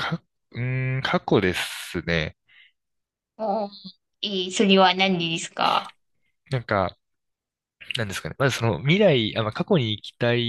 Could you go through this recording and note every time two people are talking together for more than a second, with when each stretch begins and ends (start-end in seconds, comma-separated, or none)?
none